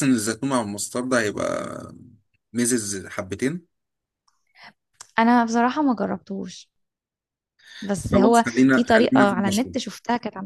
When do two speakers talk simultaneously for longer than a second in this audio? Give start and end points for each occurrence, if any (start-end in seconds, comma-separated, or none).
8.1-9.8